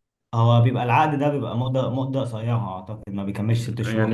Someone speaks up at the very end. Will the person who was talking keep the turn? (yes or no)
no